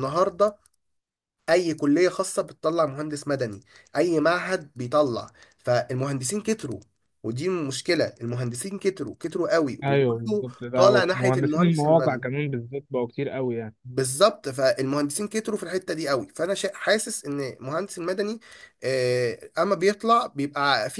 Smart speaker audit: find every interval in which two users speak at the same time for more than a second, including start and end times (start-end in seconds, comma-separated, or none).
9.8-12.3